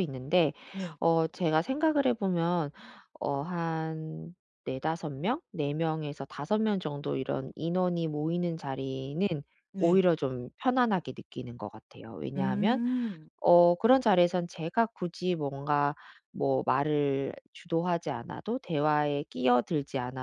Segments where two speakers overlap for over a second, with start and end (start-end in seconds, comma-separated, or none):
none